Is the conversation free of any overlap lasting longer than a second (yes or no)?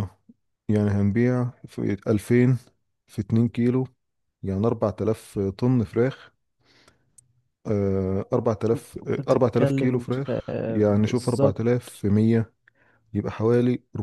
no